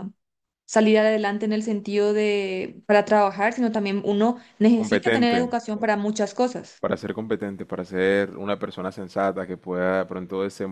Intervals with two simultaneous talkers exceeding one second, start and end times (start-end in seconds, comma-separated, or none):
none